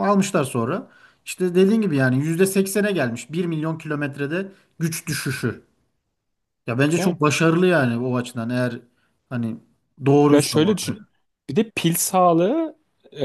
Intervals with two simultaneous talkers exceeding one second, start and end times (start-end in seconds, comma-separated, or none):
none